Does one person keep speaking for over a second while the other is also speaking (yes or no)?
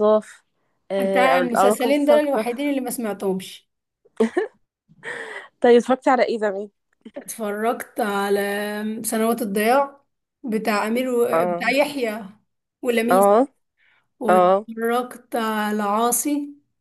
yes